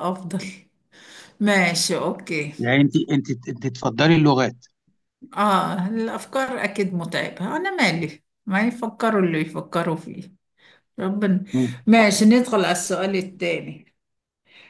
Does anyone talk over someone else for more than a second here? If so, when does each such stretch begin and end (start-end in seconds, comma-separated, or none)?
none